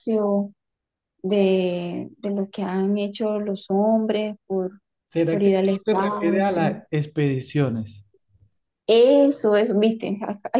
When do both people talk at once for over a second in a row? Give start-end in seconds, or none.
5.3-6.8